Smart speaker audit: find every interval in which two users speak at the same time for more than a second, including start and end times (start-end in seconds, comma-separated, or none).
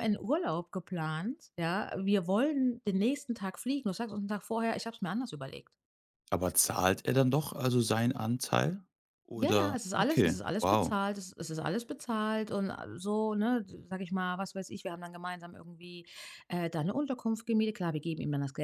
9.4-10.9